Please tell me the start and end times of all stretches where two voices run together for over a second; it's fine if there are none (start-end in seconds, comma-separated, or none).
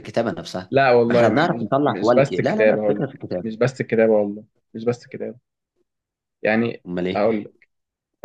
0.7-3.5